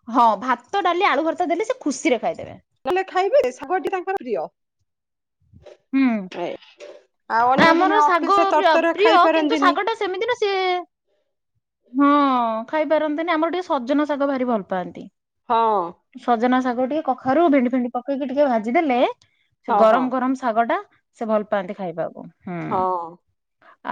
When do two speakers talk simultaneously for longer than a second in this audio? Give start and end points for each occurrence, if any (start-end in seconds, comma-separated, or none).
7.7-9.7